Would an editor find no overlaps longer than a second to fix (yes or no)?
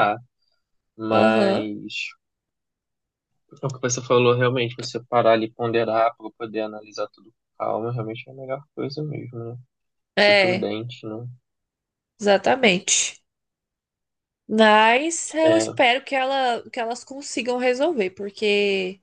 yes